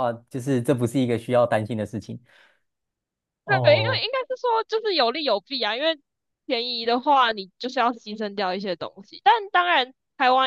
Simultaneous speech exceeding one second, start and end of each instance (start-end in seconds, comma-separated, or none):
none